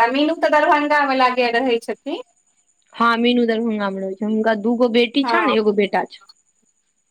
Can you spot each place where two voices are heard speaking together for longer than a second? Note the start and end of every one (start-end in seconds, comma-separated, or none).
none